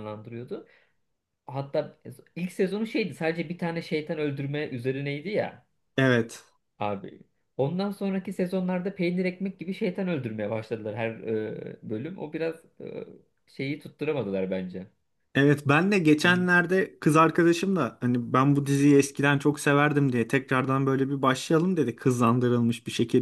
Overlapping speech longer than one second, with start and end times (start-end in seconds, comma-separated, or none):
none